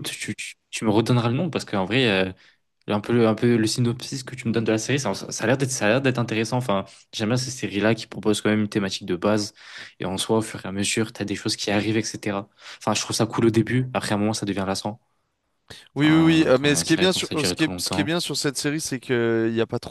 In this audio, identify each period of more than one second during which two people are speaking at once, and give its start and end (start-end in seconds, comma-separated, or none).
16.0-18.1